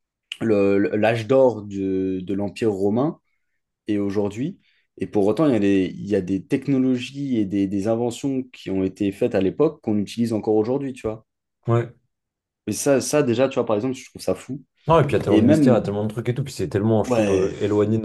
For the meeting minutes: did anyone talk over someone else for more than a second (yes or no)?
no